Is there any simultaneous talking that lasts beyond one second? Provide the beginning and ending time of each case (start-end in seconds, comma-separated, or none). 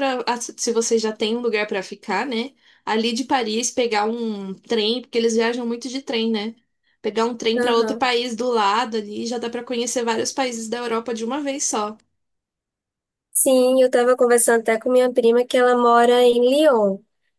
none